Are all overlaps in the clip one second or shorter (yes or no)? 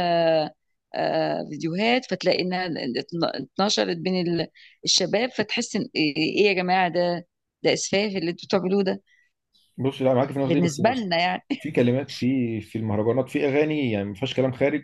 yes